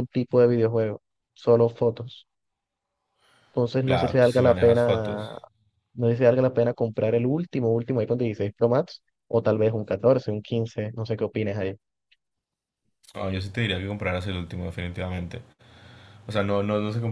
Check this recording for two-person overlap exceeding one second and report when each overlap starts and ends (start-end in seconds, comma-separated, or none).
3.8-5.2